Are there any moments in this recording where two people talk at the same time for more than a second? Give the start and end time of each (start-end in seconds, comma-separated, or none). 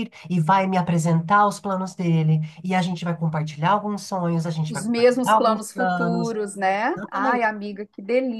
4.7-6.3